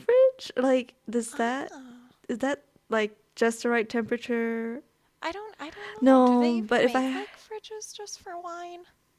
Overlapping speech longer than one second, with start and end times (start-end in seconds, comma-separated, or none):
6.0-7.3